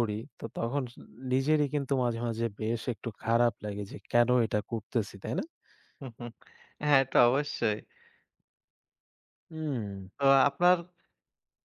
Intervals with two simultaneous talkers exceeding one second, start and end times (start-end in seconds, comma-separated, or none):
none